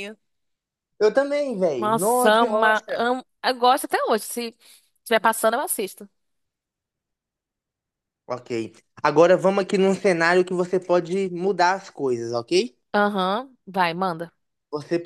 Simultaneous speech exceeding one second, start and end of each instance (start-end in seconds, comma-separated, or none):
1.8-3.0